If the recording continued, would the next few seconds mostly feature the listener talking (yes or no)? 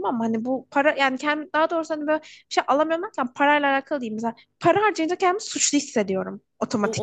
yes